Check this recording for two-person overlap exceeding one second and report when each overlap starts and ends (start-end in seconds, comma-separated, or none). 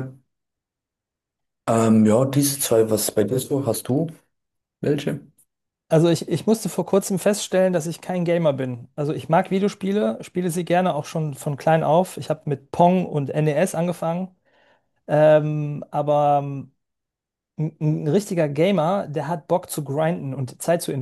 none